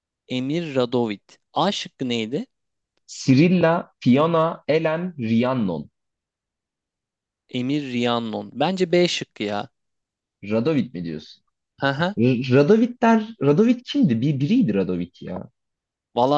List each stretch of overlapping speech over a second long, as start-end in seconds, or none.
none